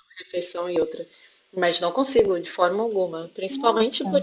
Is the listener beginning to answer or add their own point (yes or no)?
no